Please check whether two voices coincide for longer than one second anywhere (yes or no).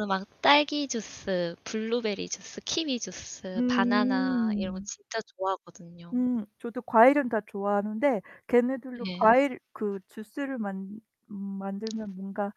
yes